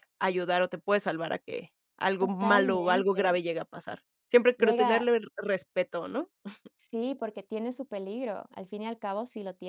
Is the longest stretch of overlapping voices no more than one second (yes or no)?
no